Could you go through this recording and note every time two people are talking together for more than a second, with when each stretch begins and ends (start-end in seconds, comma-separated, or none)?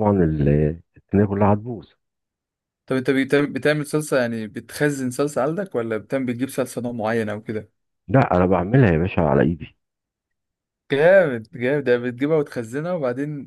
none